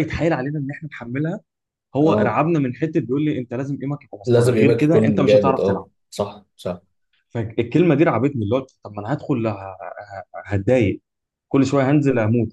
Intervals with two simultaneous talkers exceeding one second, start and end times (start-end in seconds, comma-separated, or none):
4.3-5.9